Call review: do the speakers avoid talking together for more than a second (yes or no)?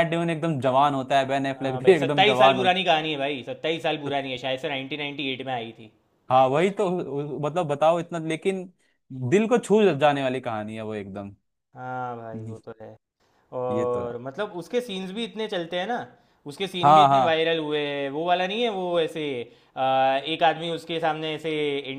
no